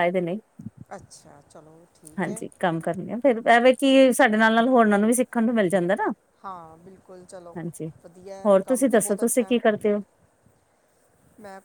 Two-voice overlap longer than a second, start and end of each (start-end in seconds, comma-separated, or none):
8.4-9.8